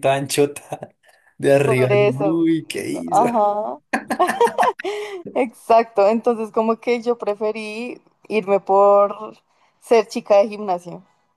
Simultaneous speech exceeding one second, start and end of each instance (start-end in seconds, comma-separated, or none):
1.6-3.2